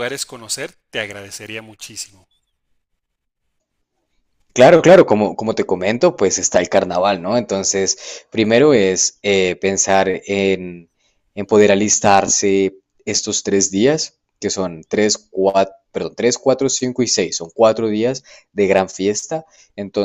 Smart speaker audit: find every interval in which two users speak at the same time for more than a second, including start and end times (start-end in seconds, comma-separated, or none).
none